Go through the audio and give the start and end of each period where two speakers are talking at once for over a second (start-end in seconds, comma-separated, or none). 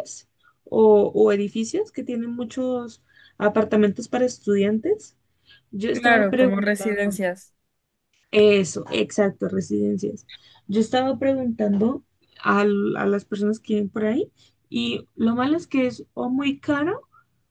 5.9-7.1